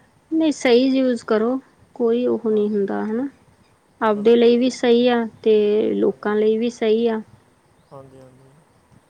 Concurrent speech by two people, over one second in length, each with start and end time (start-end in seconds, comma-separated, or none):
none